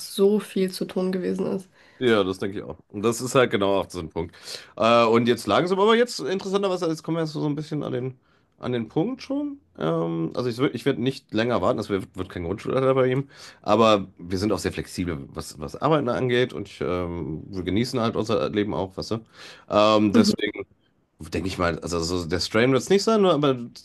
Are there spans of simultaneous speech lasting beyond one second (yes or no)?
no